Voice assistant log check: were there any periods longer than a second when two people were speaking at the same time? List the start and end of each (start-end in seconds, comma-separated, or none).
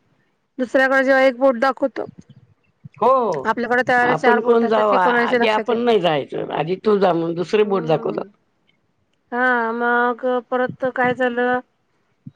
4.1-5.8